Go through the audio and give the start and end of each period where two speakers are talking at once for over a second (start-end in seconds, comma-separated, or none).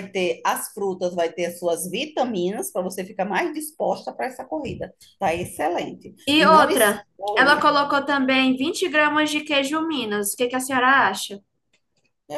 6.3-7.7